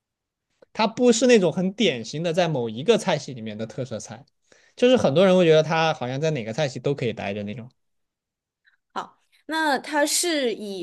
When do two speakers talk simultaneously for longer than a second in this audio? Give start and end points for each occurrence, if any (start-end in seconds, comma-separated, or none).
none